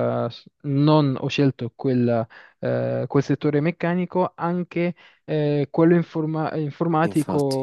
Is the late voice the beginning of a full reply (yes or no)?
no